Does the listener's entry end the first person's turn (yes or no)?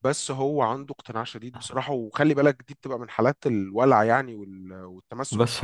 yes